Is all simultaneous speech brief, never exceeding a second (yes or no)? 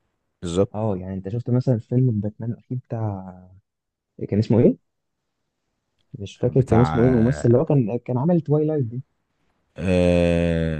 no